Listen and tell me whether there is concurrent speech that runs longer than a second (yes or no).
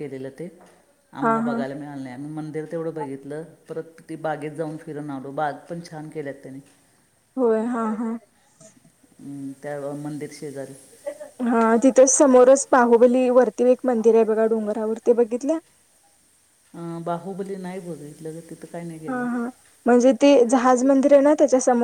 no